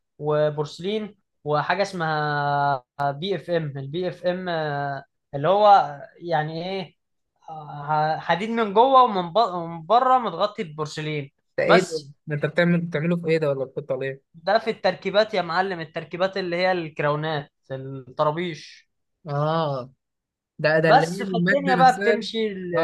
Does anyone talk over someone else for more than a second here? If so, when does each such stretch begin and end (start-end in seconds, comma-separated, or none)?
20.8-22.2